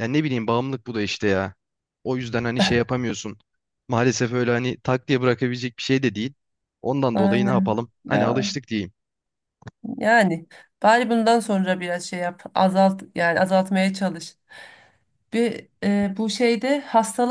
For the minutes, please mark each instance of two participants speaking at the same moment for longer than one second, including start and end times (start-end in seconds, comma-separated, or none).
7.1-8.5